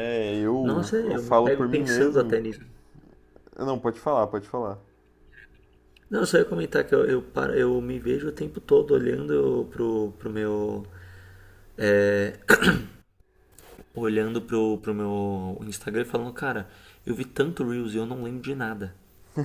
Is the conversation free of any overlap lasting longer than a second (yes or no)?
no